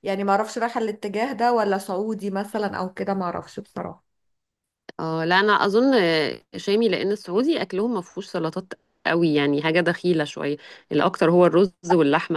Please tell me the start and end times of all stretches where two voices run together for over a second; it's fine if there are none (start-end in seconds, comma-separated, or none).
none